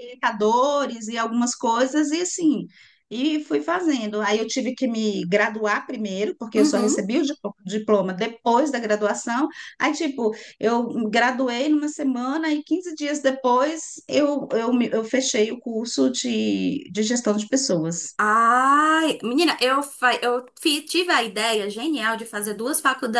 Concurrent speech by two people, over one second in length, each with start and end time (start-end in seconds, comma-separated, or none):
none